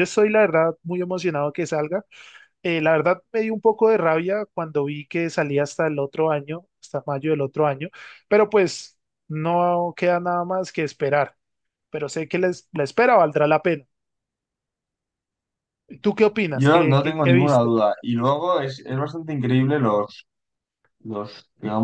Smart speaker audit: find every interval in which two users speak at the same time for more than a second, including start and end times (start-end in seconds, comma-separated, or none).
16.5-17.7